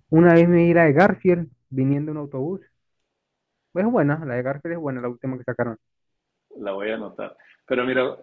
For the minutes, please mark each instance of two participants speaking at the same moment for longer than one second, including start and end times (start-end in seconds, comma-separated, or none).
none